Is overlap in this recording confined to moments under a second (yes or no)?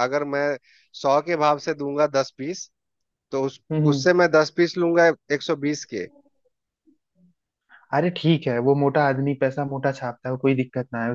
yes